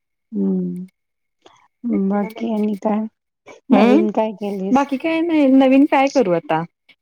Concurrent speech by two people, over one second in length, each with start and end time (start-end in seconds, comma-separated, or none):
none